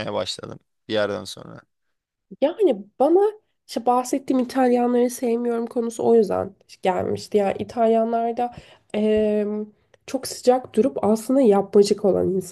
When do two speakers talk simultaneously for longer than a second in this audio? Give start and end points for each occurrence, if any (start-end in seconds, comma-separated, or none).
none